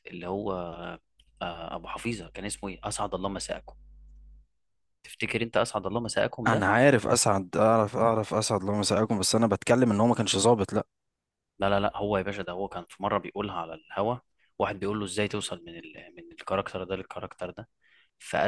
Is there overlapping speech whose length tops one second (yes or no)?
no